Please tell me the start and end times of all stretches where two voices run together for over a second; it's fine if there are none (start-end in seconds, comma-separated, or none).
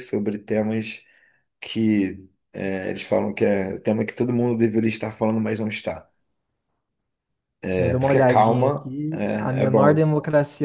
7.8-10.1